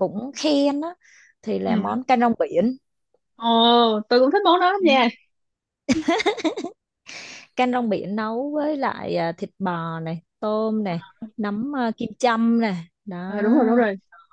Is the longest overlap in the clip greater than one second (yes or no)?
no